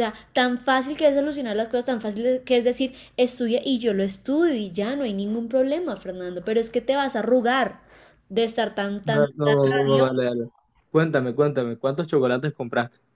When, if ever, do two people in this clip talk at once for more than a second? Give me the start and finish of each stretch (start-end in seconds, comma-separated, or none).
none